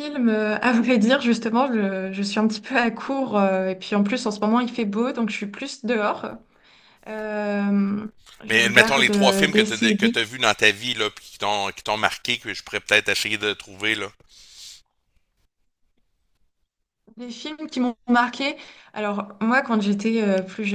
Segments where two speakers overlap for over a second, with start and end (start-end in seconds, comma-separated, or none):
8.5-10.2